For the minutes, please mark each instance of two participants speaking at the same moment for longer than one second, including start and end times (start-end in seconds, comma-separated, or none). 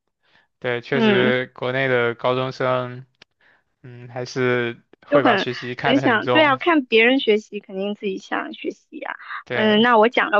5.1-6.6